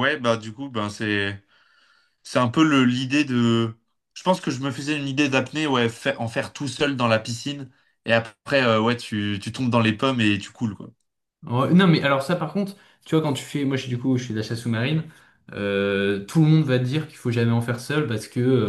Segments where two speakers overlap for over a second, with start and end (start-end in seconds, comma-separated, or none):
none